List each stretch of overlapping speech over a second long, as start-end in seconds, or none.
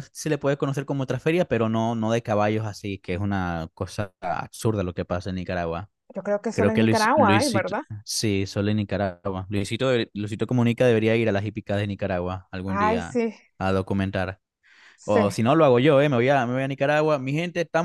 6.5-7.8